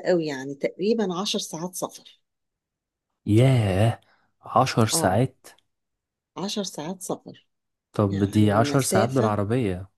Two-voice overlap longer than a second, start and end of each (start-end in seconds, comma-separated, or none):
8.1-9.4